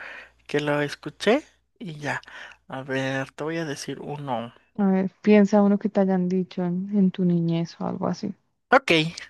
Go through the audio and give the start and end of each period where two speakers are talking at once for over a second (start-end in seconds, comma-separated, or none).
none